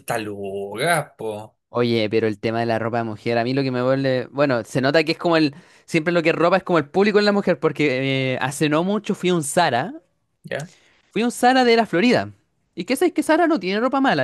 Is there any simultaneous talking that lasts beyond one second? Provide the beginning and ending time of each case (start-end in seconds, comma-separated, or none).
none